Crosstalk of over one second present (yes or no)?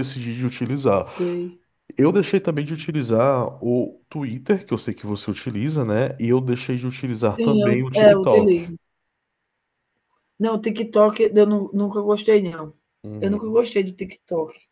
yes